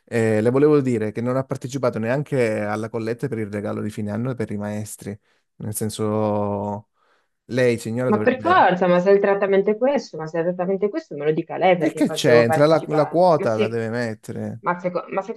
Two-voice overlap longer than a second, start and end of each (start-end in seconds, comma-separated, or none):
11.8-13.8